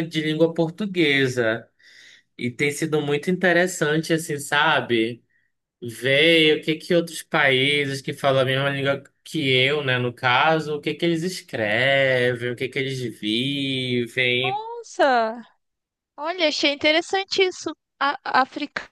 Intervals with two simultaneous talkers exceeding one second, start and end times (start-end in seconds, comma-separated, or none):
none